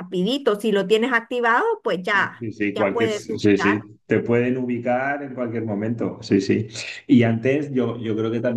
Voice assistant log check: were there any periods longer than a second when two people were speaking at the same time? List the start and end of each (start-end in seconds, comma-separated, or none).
2.4-3.9